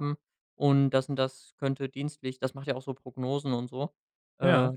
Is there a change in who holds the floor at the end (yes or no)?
no